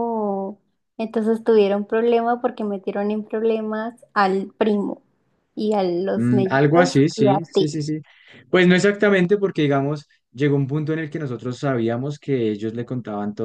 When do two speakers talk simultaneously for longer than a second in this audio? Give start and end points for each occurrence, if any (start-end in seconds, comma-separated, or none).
6.1-7.7